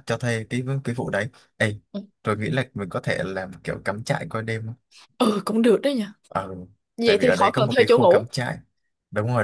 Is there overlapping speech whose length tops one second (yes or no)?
yes